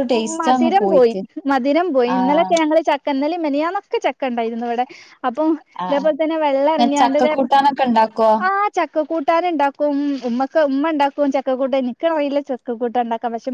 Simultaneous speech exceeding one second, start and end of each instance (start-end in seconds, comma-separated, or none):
none